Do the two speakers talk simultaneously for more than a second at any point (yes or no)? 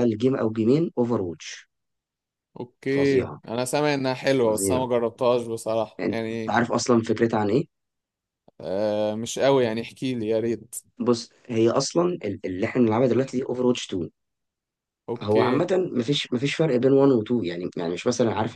no